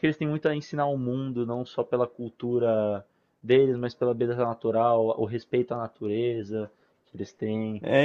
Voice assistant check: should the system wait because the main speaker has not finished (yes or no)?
no